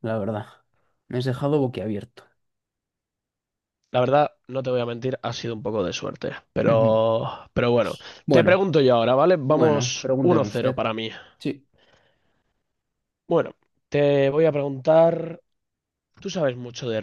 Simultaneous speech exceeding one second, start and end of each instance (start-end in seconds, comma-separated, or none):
9.4-10.8